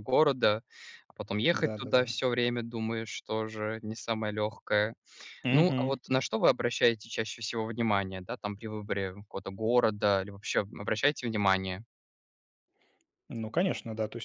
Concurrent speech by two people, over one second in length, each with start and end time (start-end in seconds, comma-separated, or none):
none